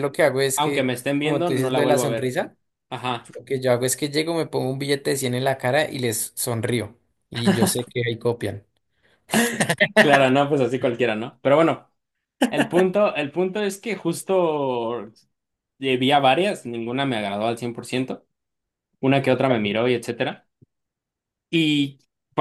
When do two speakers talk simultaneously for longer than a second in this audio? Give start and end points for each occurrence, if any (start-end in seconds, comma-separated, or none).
0.6-2.4